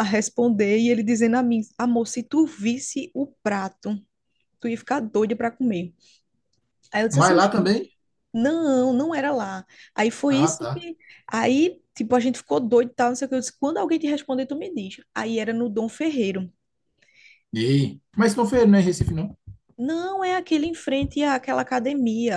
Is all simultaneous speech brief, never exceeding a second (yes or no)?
yes